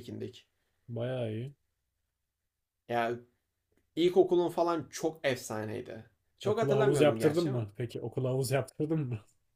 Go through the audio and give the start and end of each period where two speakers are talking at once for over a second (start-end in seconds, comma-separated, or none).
6.4-7.7